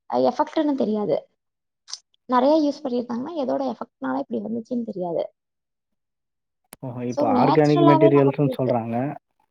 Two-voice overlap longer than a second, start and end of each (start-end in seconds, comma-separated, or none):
7.1-8.7